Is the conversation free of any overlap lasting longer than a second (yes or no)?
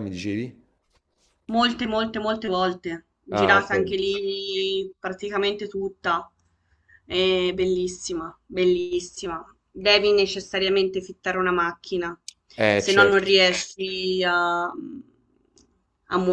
yes